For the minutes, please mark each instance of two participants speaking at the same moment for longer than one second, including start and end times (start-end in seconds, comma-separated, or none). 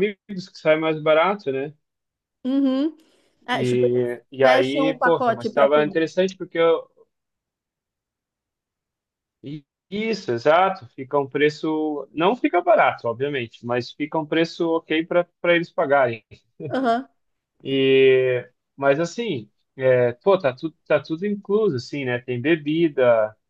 3.5-6.1